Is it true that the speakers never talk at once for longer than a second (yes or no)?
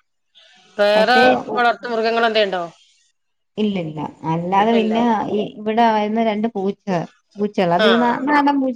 yes